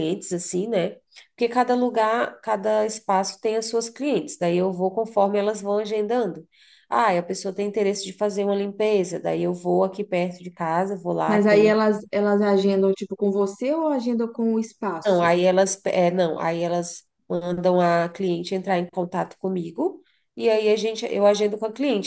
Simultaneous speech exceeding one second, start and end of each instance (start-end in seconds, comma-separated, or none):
none